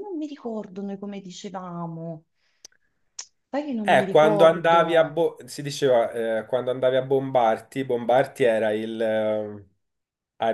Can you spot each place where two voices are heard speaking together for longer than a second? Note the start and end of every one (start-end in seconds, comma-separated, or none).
3.8-5.2